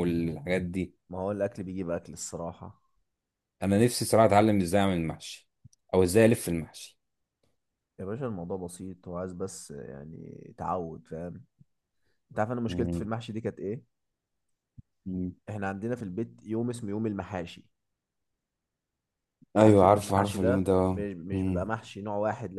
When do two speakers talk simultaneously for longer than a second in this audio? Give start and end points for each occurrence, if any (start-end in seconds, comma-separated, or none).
19.6-21.7